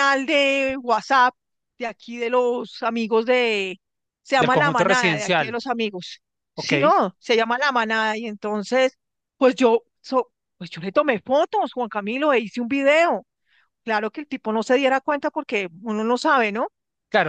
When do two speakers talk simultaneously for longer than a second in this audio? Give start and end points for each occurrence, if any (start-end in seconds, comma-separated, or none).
4.4-5.6